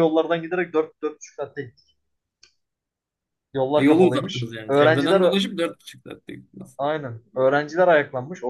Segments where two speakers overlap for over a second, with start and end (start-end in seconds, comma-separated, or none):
3.7-5.4